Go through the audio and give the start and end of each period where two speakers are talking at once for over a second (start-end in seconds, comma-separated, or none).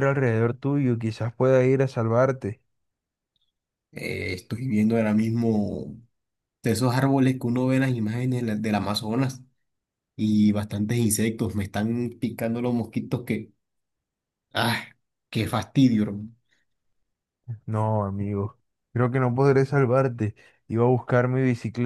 none